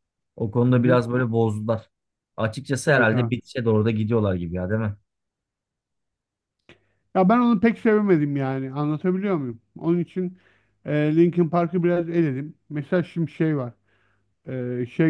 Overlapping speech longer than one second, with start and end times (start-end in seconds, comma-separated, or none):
none